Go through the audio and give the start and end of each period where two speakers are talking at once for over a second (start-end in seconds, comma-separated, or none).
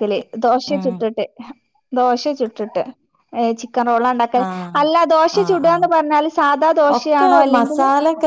none